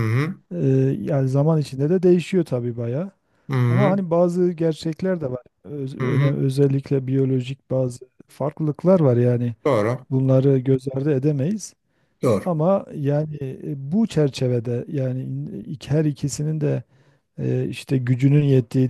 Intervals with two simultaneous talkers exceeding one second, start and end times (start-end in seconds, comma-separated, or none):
none